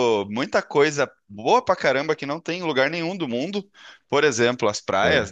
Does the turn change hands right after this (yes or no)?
no